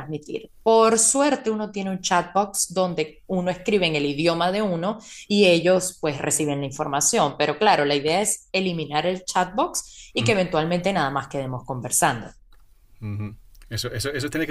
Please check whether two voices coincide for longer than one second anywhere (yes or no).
no